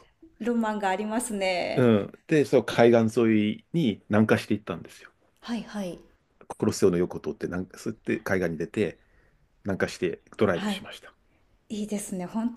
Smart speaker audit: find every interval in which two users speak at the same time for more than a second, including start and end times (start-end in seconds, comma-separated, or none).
none